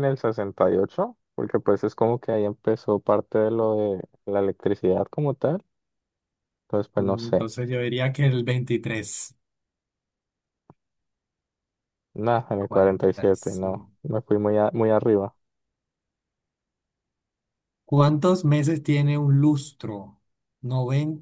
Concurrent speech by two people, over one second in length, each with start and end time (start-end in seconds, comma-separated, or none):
12.6-13.9